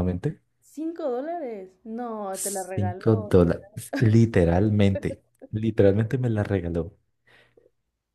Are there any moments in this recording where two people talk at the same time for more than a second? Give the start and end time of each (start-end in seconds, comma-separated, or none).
2.3-3.6